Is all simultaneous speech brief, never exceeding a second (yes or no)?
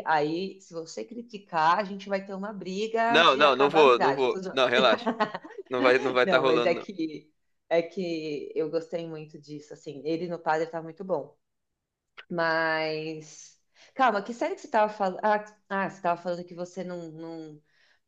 no